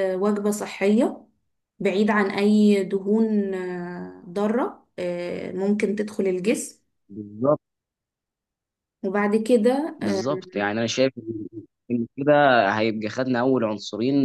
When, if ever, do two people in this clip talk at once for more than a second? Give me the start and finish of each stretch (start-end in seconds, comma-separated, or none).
none